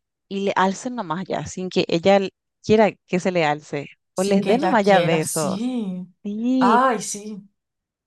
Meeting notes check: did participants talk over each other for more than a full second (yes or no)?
yes